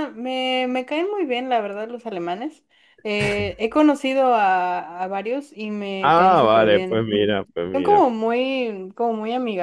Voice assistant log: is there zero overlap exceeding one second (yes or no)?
no